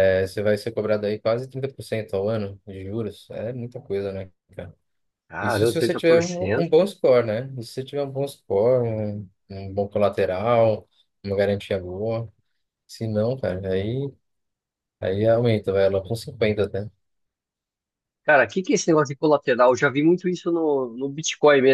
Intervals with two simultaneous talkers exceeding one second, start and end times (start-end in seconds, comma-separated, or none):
5.4-6.7